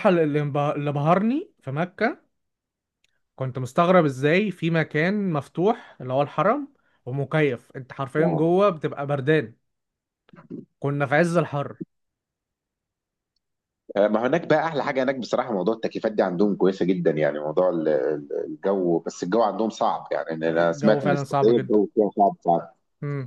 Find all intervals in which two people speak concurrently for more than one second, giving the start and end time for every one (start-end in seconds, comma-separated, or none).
20.5-21.8